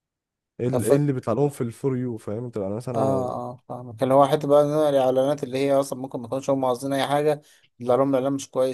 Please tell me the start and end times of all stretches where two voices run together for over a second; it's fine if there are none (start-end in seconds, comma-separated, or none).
none